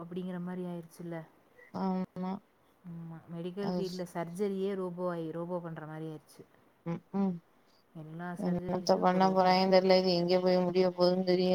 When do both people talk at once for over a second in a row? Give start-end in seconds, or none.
none